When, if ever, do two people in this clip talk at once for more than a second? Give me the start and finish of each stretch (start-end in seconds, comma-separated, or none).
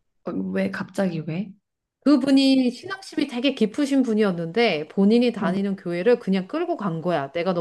none